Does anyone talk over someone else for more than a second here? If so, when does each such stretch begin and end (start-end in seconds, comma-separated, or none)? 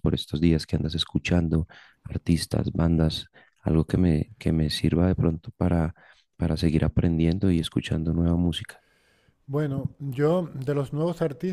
none